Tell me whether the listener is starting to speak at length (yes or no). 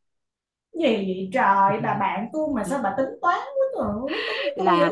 yes